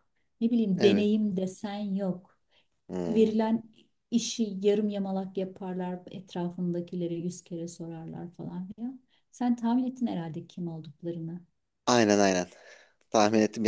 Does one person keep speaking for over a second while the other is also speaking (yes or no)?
no